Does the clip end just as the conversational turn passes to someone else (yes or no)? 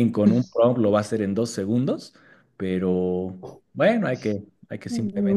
yes